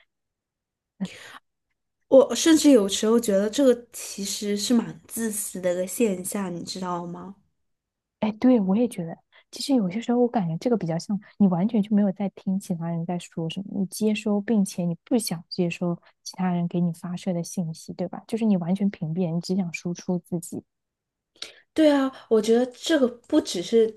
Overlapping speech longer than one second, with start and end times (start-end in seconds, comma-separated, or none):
none